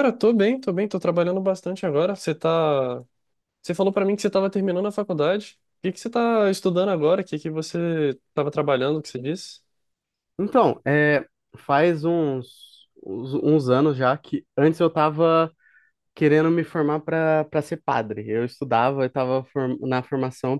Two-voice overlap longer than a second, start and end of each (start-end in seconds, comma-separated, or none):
none